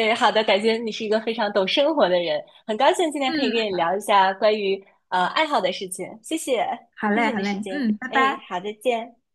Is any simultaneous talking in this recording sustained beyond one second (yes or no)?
yes